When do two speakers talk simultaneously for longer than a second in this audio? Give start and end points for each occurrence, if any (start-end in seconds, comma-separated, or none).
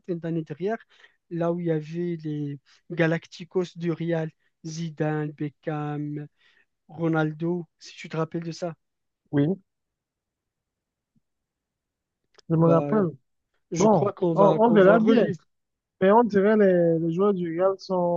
13.8-15.3